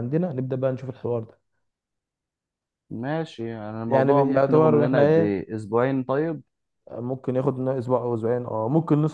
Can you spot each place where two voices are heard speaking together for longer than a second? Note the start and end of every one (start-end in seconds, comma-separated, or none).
3.9-5.5